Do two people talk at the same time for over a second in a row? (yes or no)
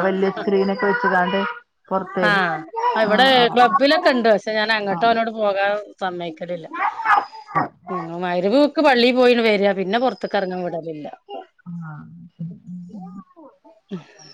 no